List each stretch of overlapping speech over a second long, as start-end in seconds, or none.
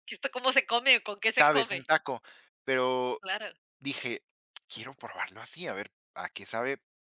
none